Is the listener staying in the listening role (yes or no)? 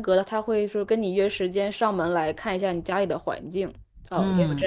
no